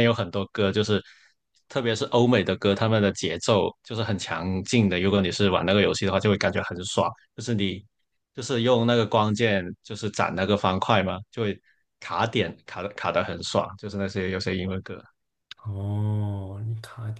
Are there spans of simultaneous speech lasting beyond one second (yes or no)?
no